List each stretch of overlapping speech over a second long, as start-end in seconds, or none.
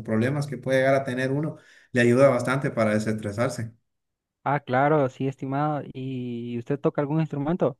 none